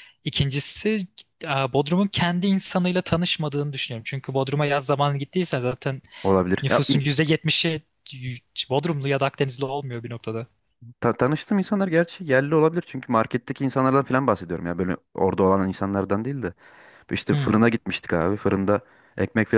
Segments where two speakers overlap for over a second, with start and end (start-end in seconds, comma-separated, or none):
none